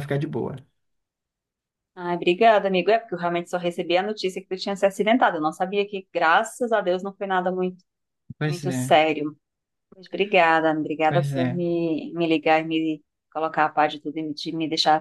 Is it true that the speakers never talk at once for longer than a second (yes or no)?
yes